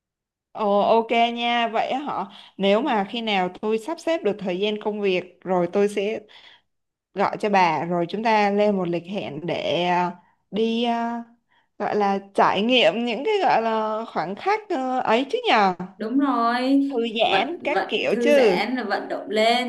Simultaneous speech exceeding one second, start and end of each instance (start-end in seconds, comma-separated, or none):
17.2-18.6